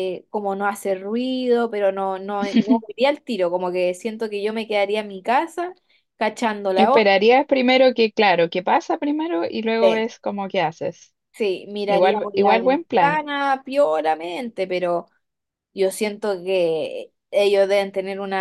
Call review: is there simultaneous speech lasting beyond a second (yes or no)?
yes